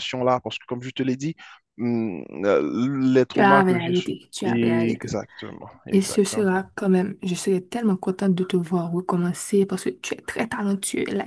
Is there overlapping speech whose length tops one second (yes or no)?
yes